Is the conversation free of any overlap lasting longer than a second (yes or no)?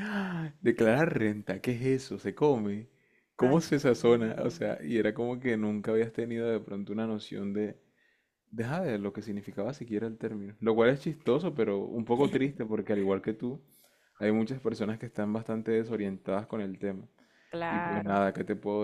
no